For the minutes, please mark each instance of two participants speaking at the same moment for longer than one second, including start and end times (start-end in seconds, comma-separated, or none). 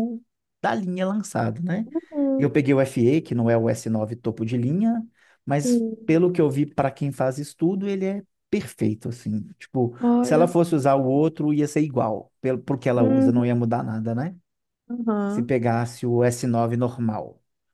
none